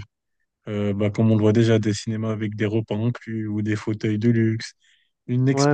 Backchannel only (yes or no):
no